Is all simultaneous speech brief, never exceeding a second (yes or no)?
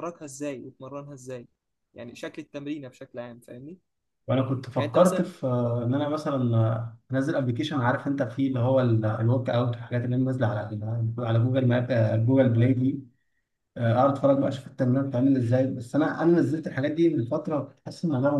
yes